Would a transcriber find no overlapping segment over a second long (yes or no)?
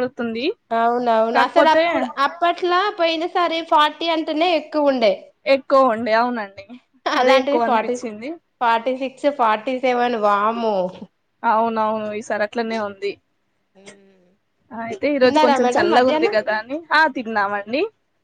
yes